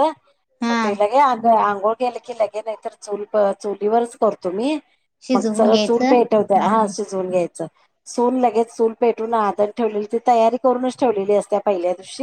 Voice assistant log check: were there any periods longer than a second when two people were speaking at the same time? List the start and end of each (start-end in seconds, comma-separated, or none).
5.3-6.9